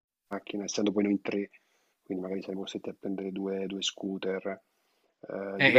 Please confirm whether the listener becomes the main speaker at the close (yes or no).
no